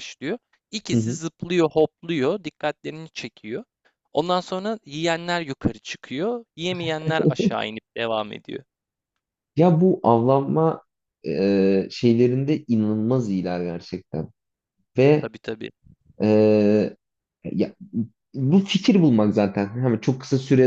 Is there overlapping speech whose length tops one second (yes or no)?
no